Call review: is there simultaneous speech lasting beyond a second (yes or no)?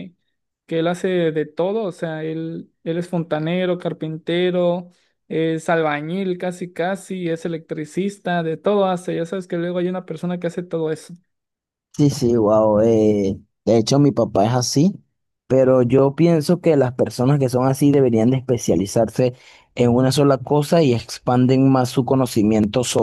no